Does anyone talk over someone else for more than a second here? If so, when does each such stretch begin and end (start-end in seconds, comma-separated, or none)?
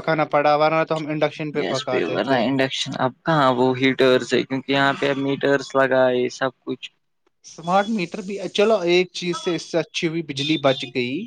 none